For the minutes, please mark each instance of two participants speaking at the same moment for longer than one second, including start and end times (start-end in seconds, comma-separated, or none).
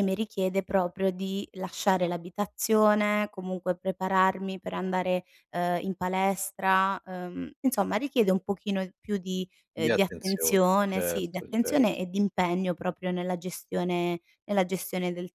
9.8-12.0